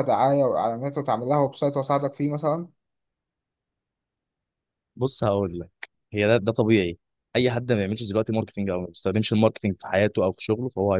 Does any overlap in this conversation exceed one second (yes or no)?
no